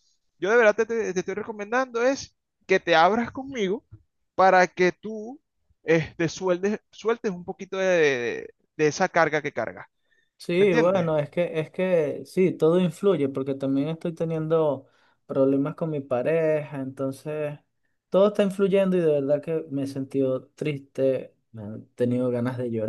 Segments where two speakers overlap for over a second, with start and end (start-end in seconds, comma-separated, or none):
none